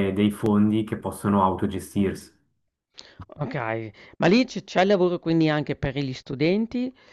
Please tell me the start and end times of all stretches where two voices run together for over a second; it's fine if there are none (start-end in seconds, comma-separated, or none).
none